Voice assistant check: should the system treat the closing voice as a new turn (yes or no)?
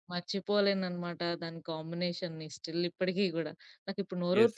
yes